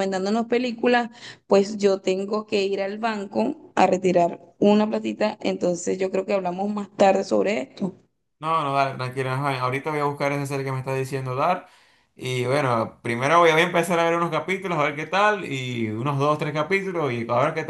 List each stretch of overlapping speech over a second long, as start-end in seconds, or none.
none